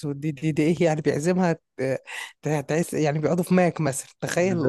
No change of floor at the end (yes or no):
no